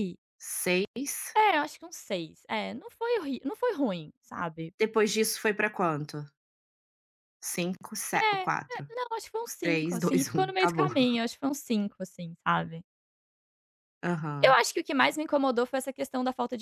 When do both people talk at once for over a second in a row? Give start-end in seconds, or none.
9.6-10.9